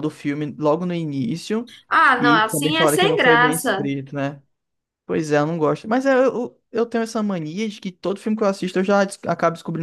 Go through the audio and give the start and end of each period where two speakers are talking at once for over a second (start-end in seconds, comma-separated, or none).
2.2-3.9